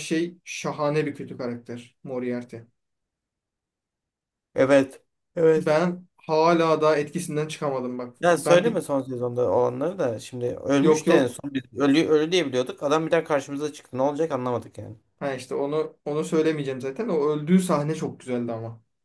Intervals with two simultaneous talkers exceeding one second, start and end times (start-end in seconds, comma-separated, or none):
none